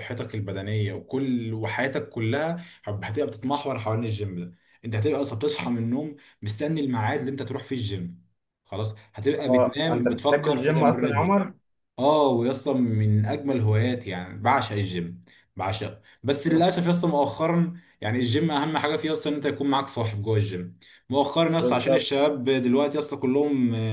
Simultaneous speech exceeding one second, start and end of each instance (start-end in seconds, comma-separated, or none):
9.5-11.4